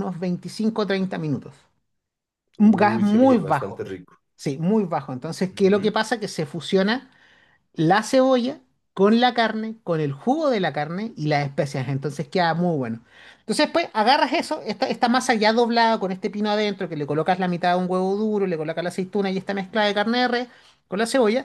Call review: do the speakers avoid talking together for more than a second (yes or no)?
no